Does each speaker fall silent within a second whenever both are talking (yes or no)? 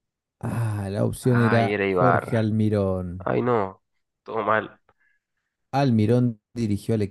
no